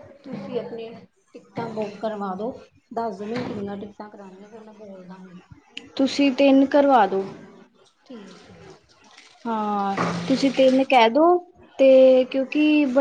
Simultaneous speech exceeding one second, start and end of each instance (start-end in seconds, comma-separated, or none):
none